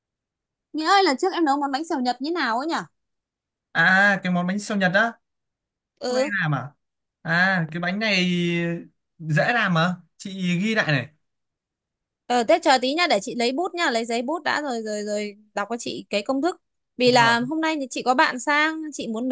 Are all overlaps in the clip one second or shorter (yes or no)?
yes